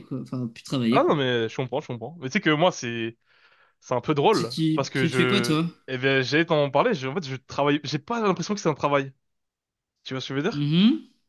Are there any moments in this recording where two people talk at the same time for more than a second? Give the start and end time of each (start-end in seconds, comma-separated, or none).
4.3-5.7